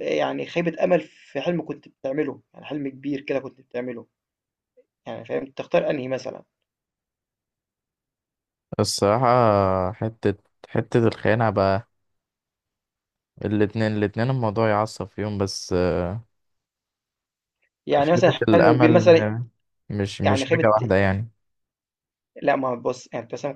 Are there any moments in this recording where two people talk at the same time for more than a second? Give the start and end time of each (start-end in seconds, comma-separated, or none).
18.0-19.3